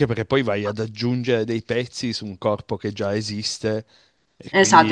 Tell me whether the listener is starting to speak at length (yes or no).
yes